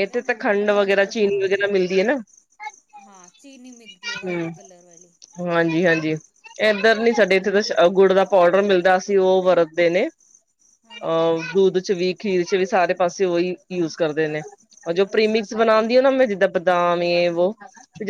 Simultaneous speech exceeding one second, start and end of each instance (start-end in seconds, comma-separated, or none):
none